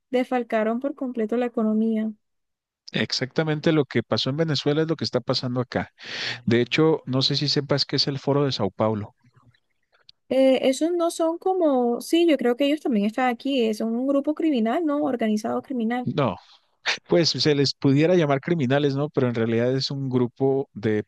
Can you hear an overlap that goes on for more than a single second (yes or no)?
no